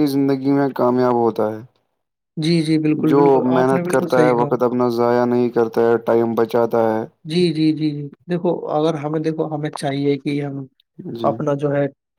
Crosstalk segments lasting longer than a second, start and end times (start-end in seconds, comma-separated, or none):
none